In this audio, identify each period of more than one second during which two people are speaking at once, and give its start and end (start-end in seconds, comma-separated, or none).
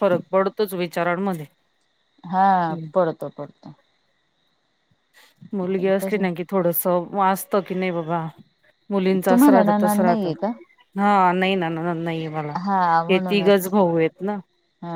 9.3-10.5